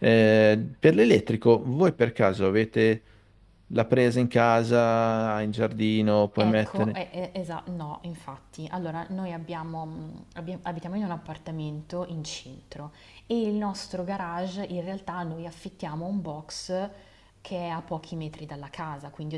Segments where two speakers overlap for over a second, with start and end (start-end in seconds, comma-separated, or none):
none